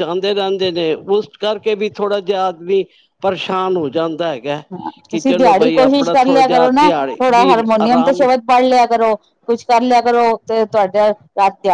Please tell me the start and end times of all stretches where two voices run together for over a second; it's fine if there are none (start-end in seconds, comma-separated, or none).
6.5-8.2